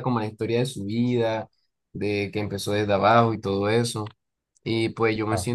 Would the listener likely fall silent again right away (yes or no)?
yes